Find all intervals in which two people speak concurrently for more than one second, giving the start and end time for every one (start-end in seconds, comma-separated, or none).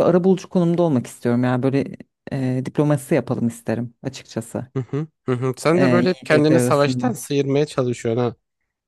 5.7-7.1